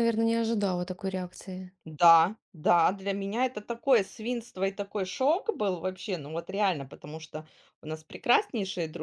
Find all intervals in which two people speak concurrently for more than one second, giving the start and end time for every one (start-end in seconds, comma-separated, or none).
none